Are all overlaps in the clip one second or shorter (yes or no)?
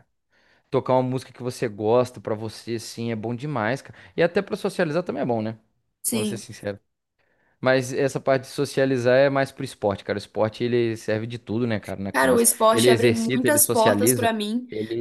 no